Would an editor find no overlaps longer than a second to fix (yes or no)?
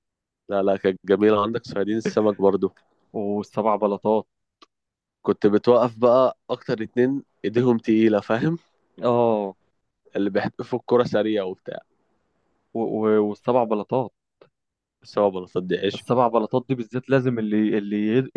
yes